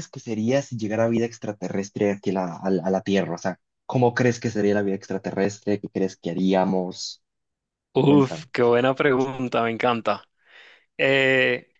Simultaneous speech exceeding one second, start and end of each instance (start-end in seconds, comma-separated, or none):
none